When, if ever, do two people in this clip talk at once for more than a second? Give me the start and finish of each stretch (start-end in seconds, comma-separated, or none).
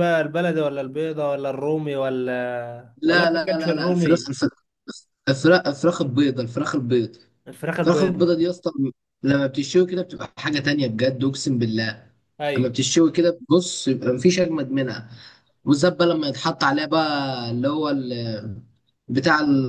3.0-4.3